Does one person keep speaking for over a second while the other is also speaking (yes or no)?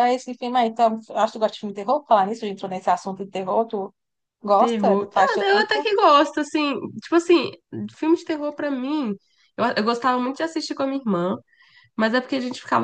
yes